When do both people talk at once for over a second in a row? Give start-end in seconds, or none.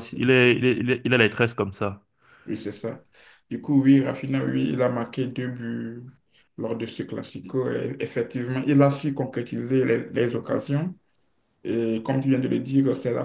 none